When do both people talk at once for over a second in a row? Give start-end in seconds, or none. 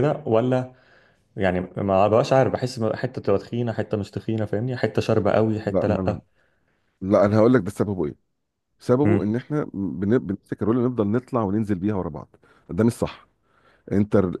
none